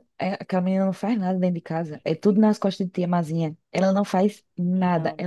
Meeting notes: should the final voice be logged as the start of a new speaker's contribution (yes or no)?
no